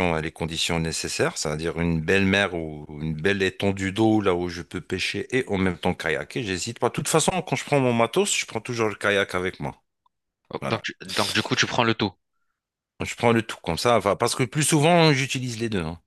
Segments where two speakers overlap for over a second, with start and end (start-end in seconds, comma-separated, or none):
none